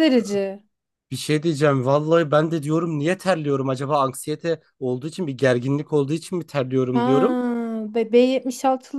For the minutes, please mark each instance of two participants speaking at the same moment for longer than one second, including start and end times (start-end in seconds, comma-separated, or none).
none